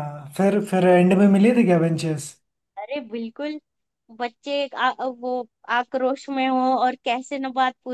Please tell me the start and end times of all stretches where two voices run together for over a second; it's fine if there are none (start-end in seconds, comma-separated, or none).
none